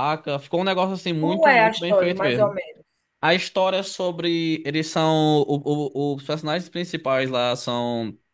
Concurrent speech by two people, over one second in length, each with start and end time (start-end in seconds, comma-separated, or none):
1.2-2.6